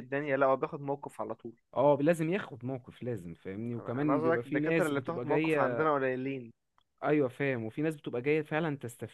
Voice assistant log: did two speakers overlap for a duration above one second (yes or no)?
yes